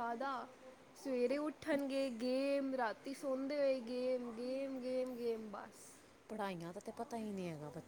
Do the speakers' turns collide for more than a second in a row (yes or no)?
no